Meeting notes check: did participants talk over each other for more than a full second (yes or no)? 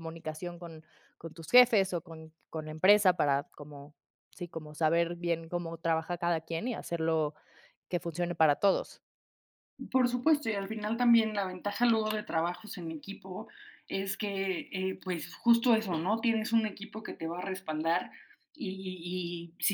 no